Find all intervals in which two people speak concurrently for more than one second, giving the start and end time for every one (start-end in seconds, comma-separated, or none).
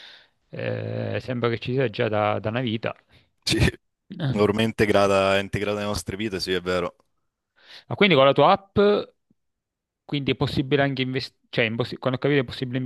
none